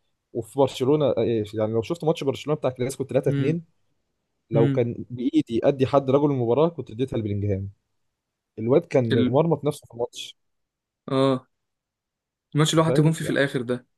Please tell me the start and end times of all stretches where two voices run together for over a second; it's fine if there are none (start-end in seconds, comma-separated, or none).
none